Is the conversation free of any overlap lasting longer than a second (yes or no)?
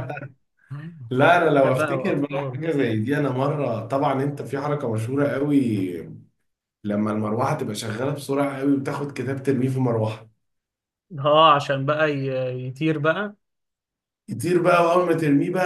no